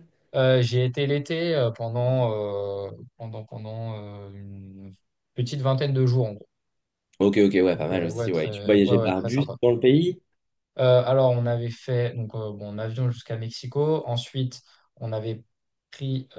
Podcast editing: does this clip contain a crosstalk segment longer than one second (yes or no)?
yes